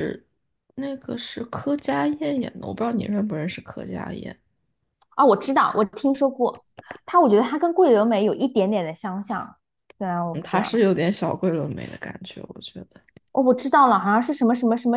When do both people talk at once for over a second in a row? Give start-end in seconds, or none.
none